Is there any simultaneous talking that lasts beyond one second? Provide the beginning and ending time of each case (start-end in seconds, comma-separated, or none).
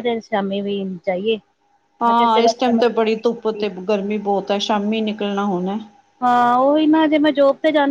2.1-3.6